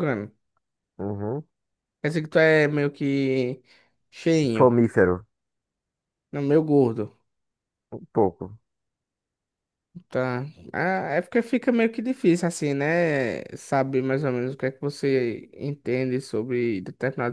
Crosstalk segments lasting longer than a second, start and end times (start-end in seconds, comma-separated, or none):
none